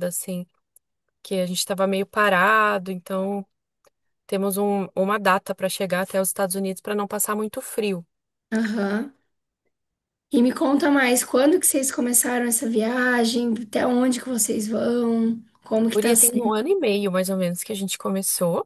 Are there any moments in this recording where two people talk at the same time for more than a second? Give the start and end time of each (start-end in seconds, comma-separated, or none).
none